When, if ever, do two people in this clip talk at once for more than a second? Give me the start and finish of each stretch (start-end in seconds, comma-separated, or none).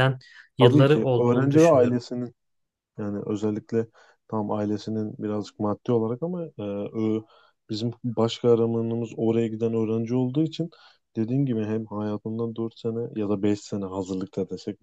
0.6-2.1